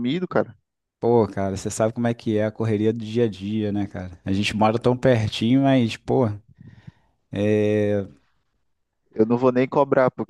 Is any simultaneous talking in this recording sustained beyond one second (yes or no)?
no